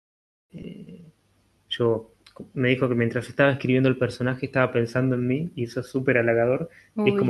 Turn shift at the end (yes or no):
no